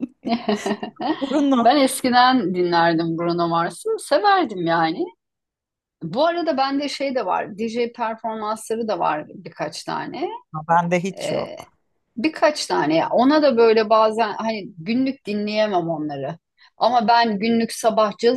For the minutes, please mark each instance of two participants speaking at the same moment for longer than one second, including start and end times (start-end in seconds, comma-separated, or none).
none